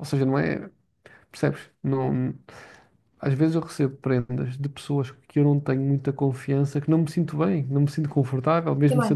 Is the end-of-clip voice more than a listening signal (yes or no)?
yes